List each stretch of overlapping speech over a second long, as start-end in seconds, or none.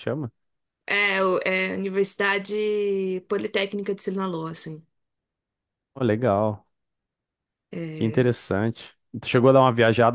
none